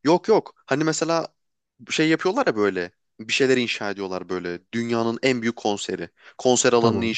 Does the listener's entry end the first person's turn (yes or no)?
no